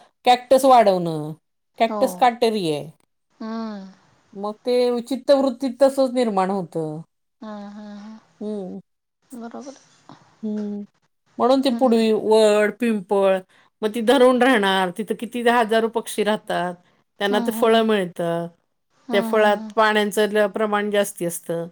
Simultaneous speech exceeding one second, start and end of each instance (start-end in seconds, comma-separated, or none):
none